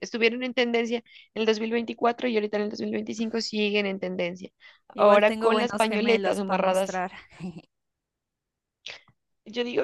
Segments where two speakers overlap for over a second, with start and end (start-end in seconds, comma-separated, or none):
4.9-7.0